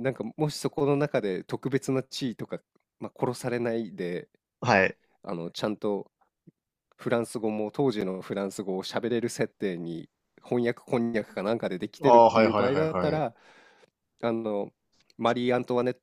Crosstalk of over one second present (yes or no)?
yes